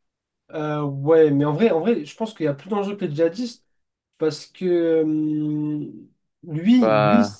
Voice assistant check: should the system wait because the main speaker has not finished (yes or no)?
yes